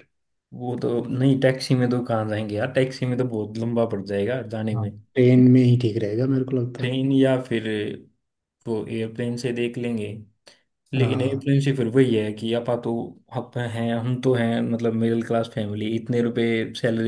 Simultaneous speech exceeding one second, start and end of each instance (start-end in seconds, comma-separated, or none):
none